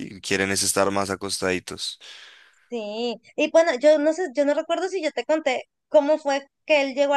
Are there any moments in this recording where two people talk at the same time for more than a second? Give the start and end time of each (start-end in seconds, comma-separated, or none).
none